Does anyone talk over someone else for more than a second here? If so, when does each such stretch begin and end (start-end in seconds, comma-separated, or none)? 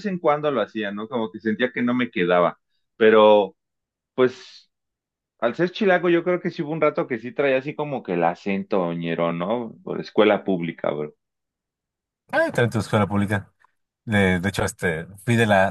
none